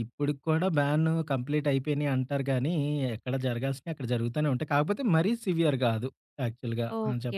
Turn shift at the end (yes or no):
yes